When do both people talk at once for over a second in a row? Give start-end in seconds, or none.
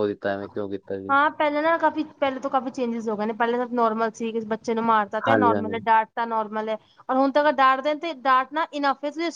none